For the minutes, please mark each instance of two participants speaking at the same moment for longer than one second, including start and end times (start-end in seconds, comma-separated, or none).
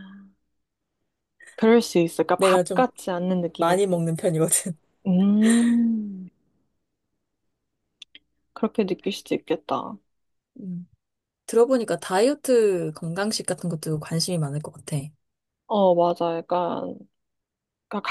none